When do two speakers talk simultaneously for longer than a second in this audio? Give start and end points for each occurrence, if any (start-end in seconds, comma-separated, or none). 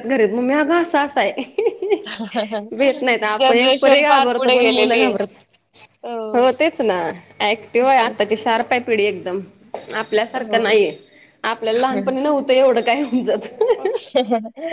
3.4-5.1